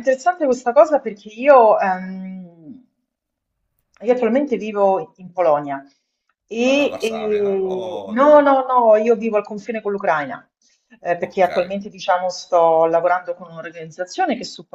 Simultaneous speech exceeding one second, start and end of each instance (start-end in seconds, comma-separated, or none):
6.7-8.4